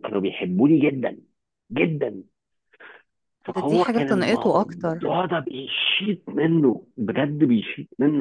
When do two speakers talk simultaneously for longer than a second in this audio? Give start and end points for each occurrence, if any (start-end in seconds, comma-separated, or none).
3.5-5.1